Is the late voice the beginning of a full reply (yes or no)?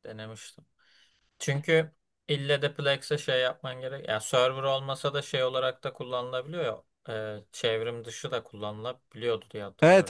yes